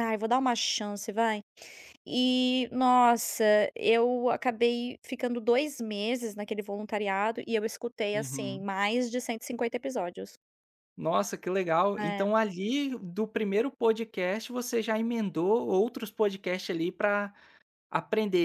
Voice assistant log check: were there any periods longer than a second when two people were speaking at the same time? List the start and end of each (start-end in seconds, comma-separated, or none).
none